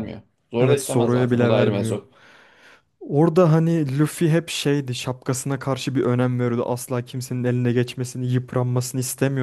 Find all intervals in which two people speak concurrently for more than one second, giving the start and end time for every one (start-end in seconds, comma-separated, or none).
0.6-2.0